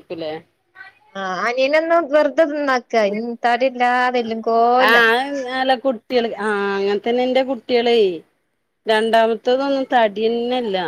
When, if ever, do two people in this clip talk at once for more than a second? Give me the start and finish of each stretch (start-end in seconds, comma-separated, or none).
none